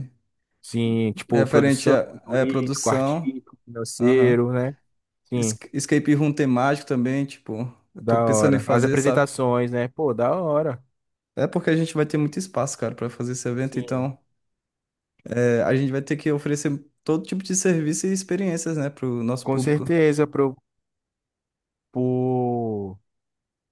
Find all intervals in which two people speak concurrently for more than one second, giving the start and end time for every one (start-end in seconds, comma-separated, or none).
1.3-3.4, 8.0-9.3